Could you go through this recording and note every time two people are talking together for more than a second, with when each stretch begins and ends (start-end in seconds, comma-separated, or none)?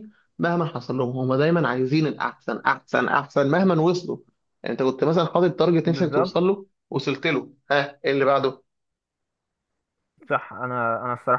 none